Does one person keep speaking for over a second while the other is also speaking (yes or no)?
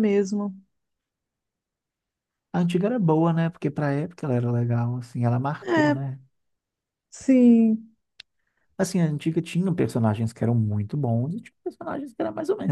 no